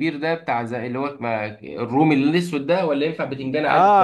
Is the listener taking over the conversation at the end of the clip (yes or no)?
yes